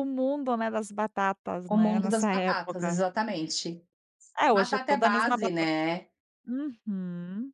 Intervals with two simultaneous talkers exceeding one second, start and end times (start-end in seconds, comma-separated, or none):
1.7-3.0, 4.5-5.7